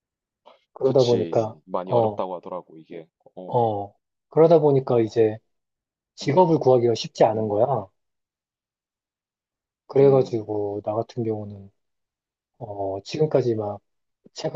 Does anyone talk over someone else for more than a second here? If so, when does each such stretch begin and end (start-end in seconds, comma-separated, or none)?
0.8-2.2